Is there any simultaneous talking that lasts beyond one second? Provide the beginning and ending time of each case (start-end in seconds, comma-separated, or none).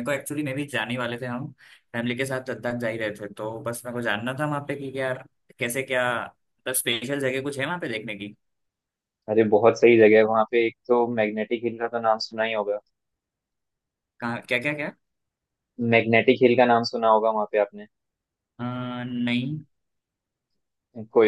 none